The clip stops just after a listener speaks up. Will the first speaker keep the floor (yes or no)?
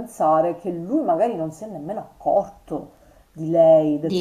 yes